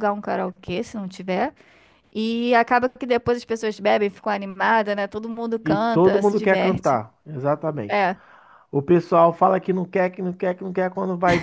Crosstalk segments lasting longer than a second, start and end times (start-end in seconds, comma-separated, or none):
5.6-7.0